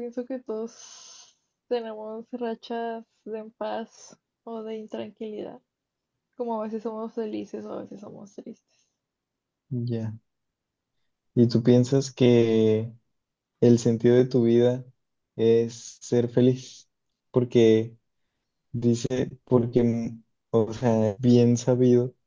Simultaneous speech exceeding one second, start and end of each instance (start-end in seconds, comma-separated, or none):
none